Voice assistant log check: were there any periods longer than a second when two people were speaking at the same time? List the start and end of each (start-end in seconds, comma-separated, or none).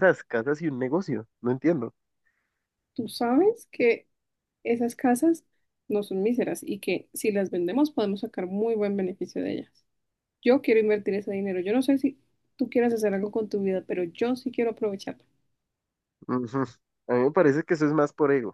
none